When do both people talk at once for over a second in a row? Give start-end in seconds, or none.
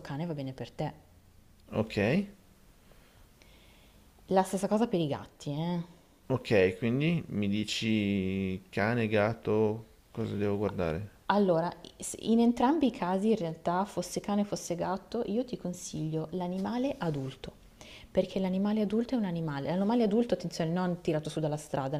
none